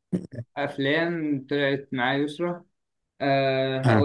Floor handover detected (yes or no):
no